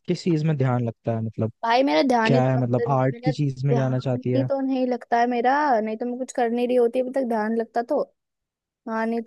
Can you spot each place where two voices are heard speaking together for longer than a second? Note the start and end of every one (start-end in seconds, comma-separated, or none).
2.2-4.5